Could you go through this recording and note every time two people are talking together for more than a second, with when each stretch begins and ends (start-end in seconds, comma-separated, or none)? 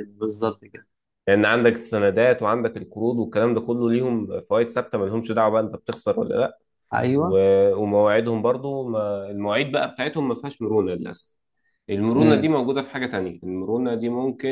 none